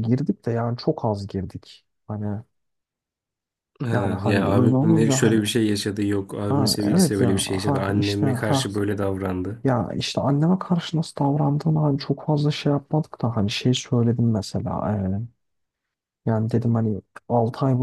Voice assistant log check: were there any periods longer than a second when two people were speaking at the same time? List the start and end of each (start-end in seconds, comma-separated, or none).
3.9-5.4, 6.5-8.7